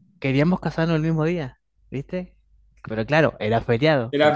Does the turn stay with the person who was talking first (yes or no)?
yes